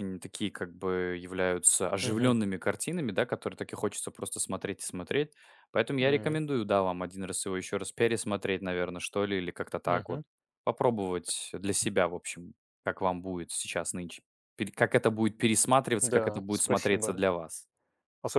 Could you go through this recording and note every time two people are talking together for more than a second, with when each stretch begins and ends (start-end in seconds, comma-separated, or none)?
16.0-17.2